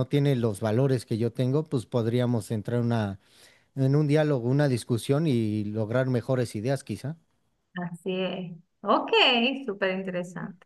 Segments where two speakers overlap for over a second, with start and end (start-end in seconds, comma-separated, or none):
none